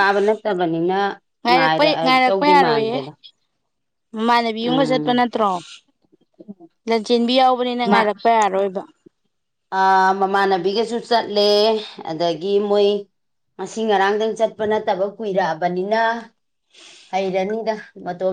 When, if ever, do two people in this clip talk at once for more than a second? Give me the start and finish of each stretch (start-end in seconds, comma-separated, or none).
1.5-3.0